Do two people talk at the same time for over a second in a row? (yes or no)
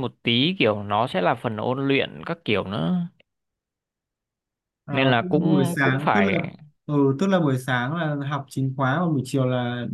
yes